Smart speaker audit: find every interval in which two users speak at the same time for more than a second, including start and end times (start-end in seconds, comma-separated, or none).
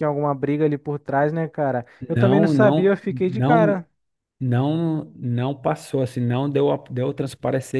2.1-3.8